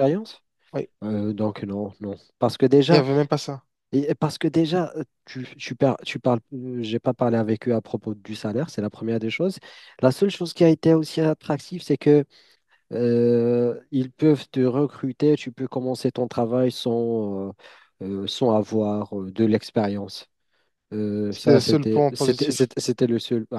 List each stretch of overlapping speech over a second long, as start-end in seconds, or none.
21.3-22.7